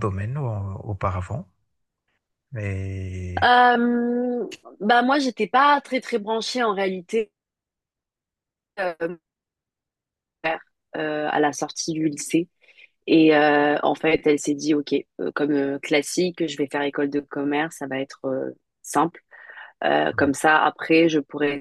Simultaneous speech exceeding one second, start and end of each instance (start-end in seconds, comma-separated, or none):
none